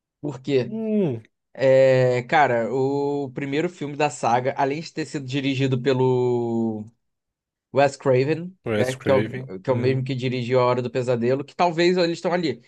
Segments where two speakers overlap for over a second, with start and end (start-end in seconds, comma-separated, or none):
8.7-10.1